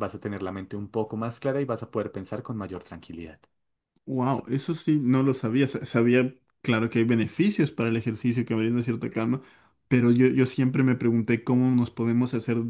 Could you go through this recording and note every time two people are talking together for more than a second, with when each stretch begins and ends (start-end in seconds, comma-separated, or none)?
none